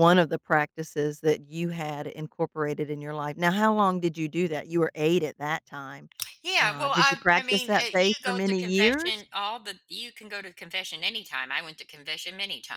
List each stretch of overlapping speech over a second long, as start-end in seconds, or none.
6.6-9.2